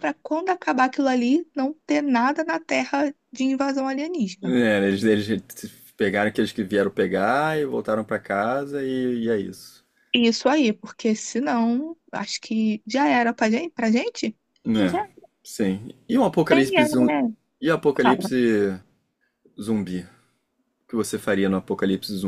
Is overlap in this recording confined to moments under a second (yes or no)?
yes